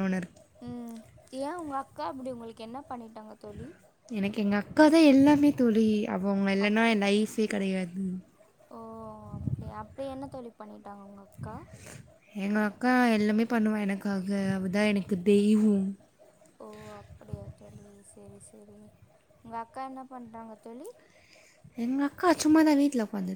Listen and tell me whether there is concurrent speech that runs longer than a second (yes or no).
no